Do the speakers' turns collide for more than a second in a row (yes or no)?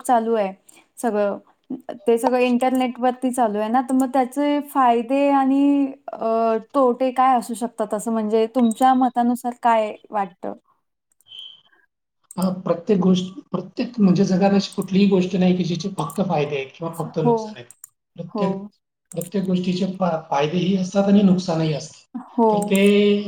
no